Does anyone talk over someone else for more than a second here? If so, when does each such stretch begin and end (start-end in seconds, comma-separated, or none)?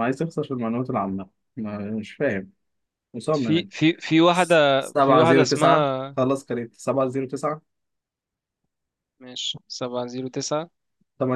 4.8-6.2